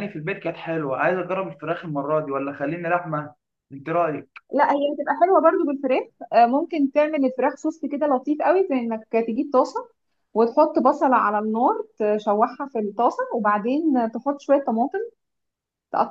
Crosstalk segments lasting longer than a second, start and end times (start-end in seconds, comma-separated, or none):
none